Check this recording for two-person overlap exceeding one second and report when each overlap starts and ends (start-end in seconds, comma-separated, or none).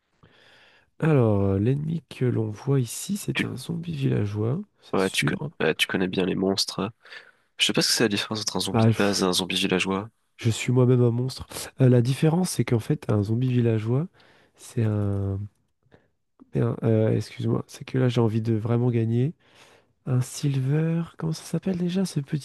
none